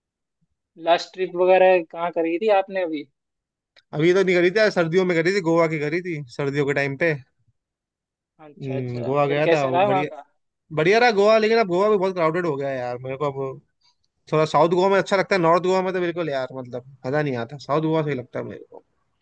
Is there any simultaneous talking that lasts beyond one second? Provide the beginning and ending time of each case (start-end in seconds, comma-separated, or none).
8.6-10.1